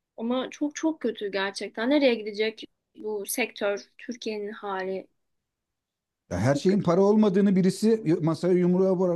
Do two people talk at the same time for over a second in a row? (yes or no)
no